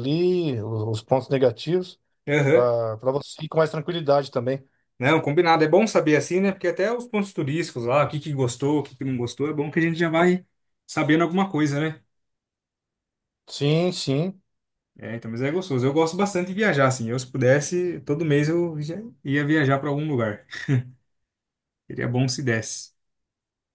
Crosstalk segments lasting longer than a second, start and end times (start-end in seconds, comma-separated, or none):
none